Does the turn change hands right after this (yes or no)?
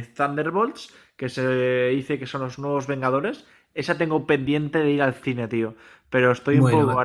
no